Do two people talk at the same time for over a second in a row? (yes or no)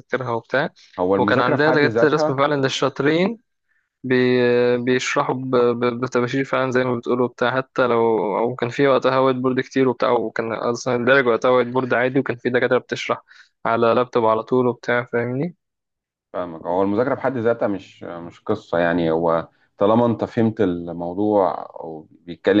yes